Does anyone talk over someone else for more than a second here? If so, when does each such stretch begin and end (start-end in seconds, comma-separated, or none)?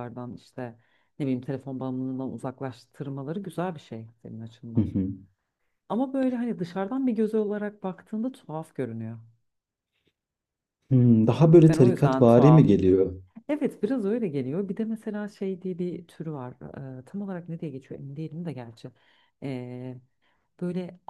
11.6-12.8